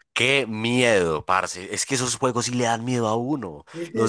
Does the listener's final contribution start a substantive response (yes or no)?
no